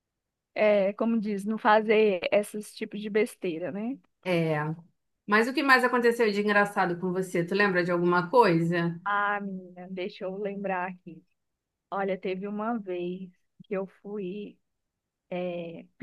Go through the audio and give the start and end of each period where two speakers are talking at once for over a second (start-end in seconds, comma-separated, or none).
none